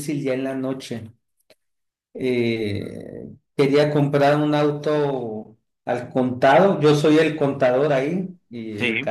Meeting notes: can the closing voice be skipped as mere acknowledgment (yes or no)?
yes